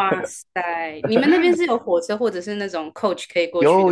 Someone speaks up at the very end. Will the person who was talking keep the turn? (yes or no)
no